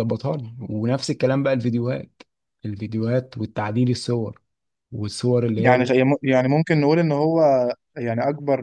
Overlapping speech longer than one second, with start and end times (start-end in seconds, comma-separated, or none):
none